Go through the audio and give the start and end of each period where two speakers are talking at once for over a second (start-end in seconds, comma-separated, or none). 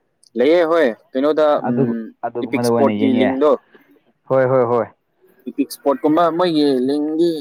1.7-3.3